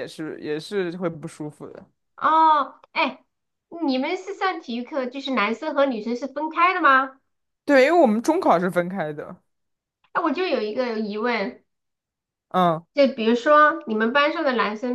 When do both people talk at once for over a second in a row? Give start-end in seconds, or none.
none